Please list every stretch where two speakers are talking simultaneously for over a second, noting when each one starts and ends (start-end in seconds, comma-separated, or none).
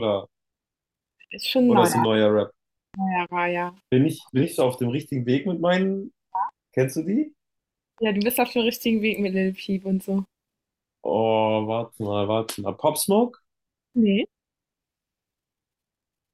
none